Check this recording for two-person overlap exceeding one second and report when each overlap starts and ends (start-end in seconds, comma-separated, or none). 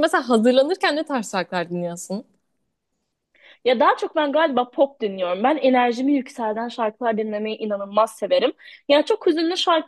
none